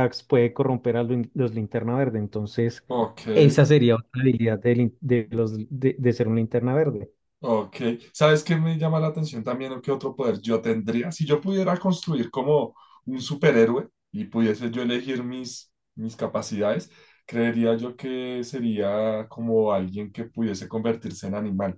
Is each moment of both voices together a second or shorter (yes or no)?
yes